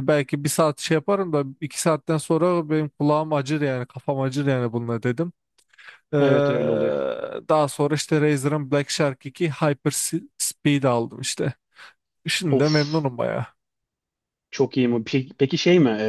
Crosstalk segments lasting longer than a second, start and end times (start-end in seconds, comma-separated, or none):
none